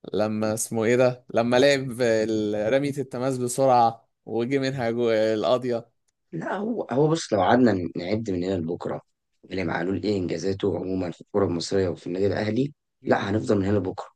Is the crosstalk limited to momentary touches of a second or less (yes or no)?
yes